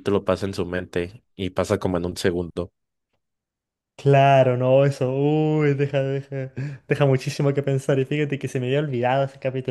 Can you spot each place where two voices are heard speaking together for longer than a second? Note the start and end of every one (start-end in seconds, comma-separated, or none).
none